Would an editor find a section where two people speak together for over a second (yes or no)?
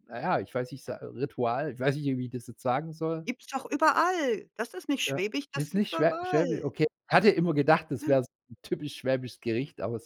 yes